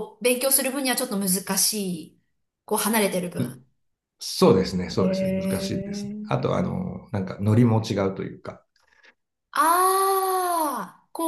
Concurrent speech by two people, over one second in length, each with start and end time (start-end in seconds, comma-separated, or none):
5.0-6.5